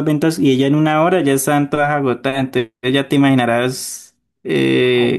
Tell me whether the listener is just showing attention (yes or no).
yes